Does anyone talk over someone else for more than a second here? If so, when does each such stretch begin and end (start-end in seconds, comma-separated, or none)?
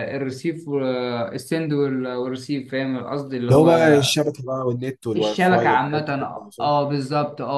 5.1-6.7